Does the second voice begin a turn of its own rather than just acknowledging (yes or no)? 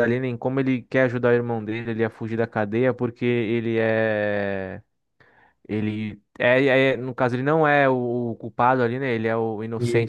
no